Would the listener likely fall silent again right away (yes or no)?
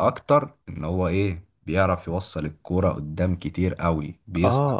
no